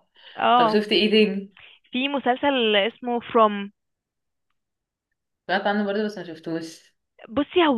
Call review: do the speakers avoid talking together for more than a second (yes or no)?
yes